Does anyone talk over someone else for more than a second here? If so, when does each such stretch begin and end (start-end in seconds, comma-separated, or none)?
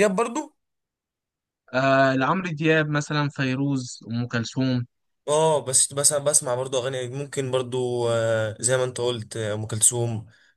none